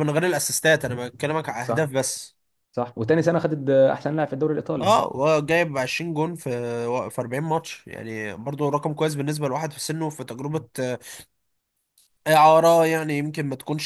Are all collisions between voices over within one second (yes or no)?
yes